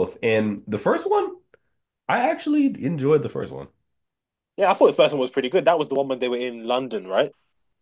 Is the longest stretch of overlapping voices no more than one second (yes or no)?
yes